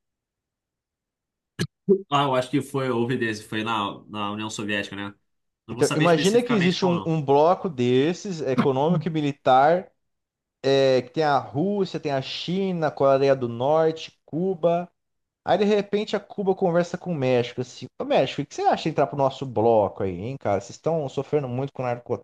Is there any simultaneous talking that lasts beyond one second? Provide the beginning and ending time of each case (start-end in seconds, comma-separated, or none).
5.7-7.1